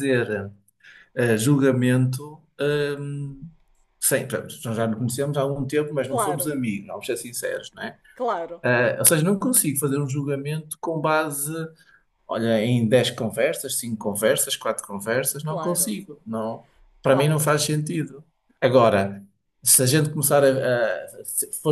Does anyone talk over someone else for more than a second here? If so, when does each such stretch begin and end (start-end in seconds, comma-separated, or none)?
none